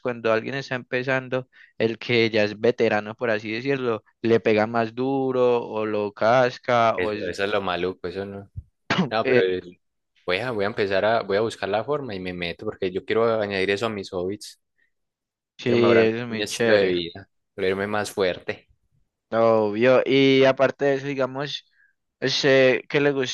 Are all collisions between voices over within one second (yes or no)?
no